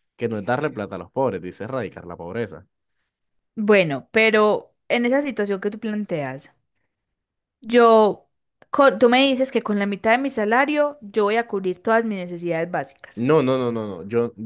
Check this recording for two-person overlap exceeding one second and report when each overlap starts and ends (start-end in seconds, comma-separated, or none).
none